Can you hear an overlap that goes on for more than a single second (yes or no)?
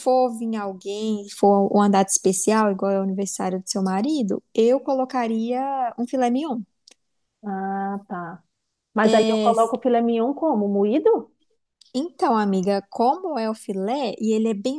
no